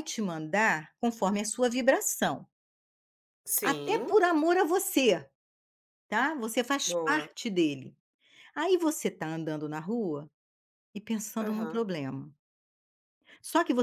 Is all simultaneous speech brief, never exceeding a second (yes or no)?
yes